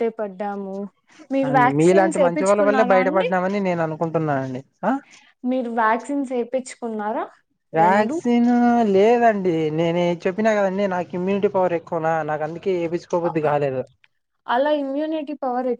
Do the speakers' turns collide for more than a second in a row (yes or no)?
yes